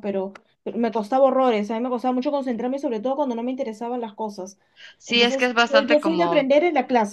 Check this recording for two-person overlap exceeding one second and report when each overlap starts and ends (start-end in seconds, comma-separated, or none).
5.0-6.5